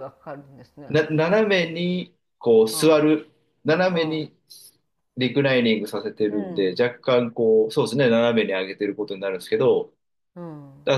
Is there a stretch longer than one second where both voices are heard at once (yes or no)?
no